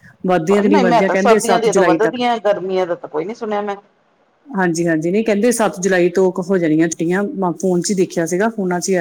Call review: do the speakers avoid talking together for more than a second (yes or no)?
no